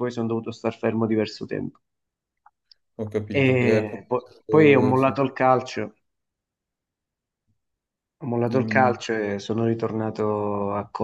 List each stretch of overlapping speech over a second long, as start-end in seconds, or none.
3.4-5.2